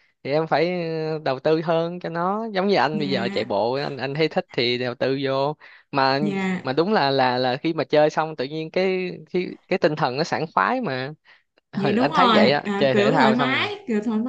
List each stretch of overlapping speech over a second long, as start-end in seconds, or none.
11.8-13.7